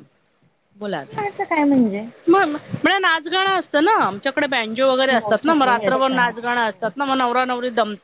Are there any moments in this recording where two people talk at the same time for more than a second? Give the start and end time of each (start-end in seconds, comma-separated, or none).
5.1-6.5